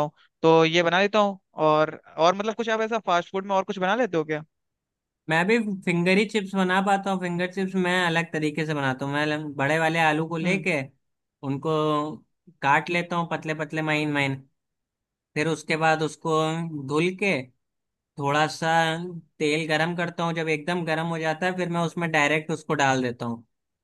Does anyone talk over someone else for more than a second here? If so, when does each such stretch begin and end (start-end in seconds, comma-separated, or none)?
none